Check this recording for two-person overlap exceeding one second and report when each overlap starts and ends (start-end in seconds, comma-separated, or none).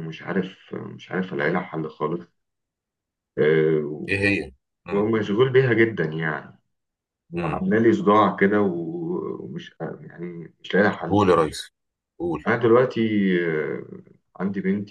none